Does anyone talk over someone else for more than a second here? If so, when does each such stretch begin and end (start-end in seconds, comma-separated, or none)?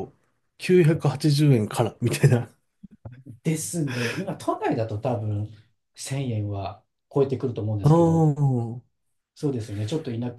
none